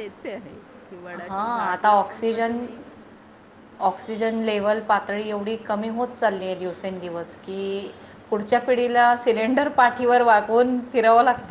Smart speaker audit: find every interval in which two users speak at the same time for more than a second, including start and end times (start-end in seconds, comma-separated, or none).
1.1-2.6